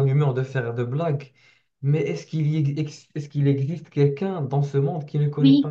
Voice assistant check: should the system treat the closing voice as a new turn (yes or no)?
yes